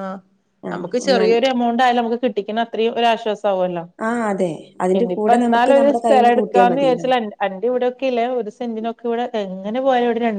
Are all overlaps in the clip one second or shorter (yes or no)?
no